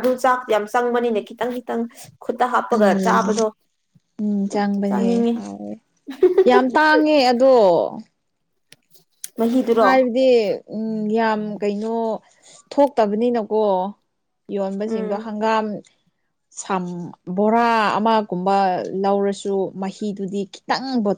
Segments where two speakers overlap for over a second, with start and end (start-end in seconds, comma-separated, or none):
none